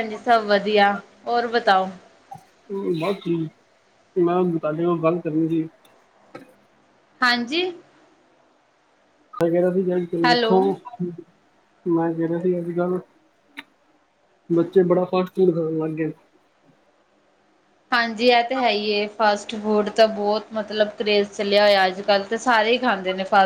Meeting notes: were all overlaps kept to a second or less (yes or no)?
yes